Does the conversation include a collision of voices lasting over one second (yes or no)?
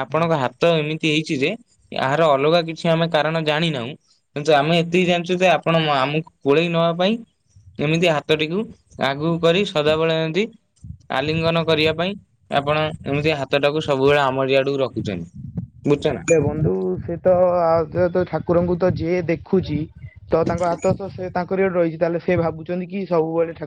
no